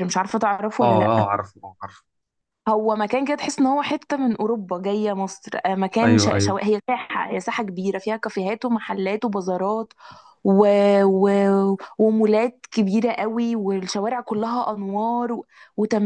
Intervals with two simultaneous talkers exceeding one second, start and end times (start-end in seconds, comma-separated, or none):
none